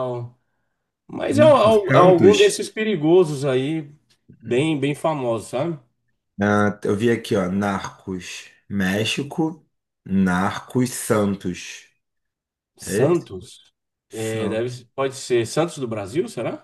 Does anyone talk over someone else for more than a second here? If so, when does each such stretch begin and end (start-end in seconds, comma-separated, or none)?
1.3-2.6